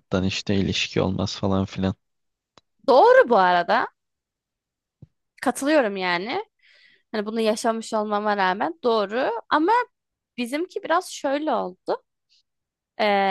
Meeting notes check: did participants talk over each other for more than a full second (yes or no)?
no